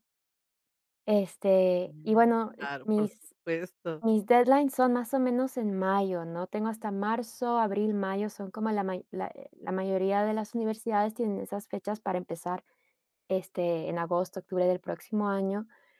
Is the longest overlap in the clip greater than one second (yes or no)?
yes